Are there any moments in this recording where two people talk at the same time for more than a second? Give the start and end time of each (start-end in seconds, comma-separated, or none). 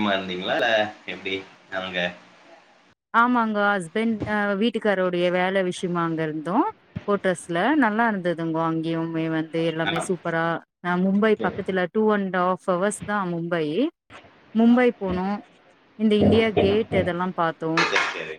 none